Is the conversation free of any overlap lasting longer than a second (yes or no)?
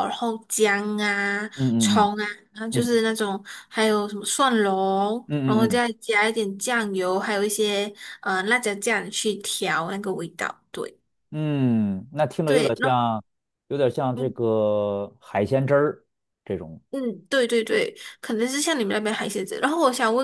yes